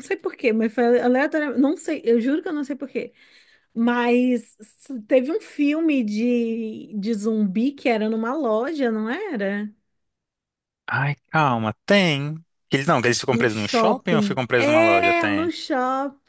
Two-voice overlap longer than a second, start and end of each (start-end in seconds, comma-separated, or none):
13.3-15.5